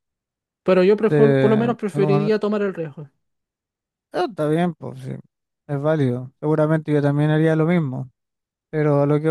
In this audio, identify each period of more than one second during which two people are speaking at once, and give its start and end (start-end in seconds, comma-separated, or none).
1.1-2.3